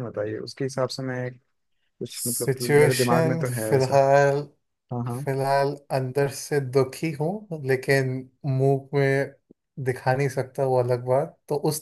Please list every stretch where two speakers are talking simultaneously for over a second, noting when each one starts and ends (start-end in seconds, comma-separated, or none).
2.1-4.0